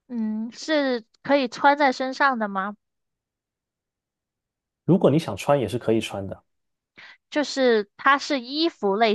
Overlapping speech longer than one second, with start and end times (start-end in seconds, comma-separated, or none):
none